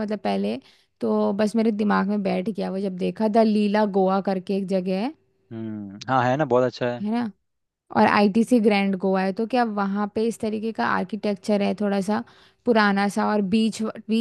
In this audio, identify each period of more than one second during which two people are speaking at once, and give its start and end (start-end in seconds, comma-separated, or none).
none